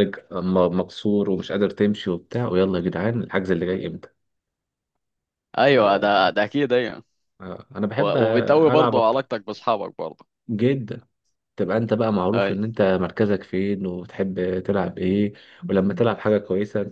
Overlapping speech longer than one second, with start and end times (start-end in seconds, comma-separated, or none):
8.0-9.2